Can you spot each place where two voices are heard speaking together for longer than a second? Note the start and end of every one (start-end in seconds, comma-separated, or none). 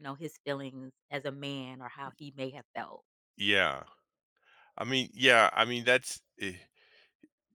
none